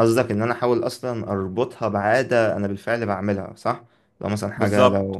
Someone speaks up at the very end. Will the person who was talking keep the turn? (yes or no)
yes